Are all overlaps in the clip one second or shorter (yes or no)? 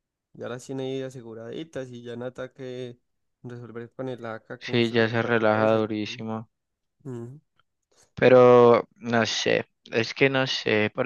no